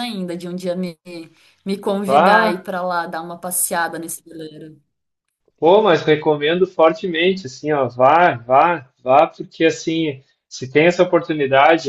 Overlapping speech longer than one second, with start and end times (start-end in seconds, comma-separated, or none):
none